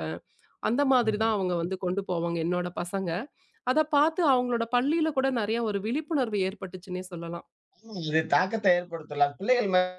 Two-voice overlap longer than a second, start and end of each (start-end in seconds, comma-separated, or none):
none